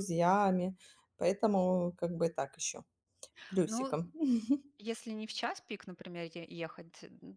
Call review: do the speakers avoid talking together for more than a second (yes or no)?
yes